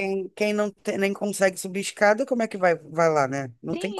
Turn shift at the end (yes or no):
yes